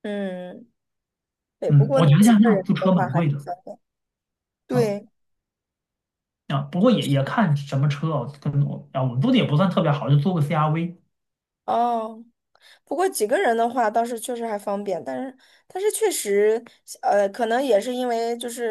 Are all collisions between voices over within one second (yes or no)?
no